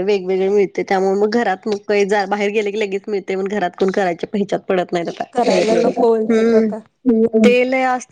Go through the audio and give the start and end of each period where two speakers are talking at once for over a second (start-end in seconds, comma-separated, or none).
none